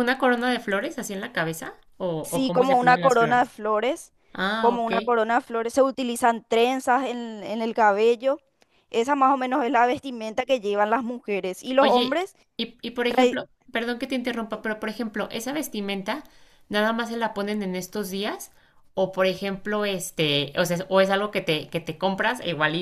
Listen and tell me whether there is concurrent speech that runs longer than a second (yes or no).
yes